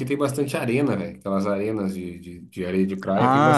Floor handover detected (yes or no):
yes